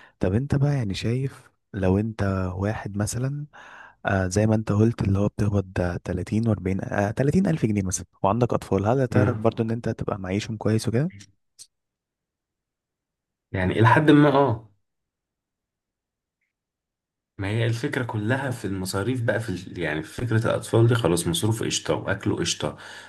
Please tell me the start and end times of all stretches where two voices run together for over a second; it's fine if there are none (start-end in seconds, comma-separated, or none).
none